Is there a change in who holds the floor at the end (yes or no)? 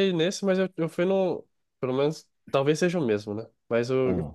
no